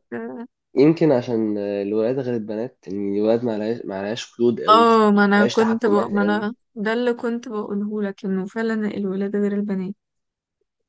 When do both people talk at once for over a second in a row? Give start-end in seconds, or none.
4.7-6.5